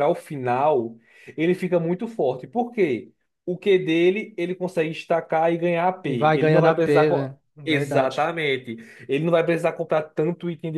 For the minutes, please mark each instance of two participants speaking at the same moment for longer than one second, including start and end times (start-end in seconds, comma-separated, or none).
6.0-8.3